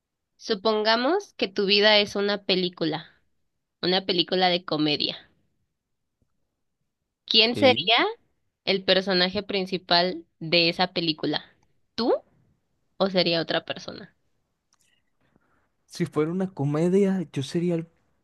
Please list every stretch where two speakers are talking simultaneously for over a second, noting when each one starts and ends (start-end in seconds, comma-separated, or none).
none